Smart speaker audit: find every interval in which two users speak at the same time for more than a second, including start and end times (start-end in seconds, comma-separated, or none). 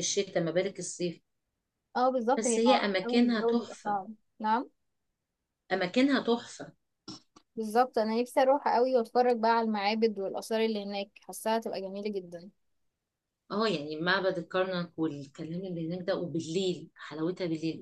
2.4-4.0